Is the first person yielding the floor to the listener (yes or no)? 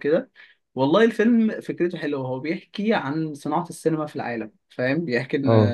no